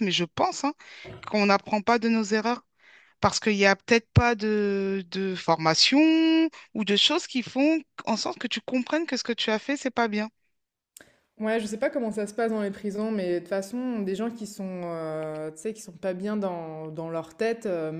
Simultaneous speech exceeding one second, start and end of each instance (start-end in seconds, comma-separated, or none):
none